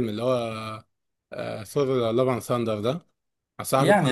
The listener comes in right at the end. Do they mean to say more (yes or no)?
yes